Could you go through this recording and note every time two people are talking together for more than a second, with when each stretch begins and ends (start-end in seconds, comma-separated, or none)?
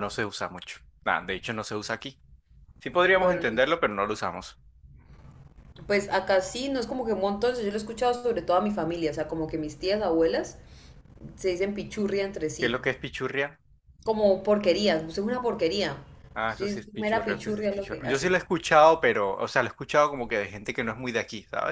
16.5-18.3